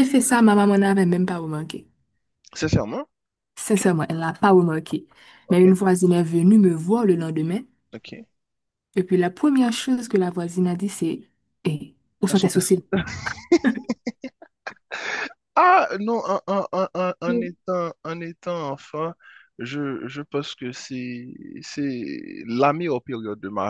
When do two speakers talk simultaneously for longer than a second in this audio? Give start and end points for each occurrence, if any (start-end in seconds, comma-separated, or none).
none